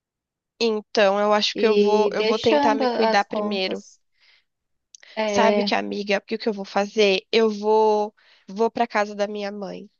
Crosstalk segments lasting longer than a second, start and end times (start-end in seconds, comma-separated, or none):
1.6-3.8